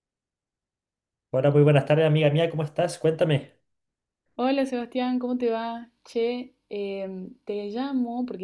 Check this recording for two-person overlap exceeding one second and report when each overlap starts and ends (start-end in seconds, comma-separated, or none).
none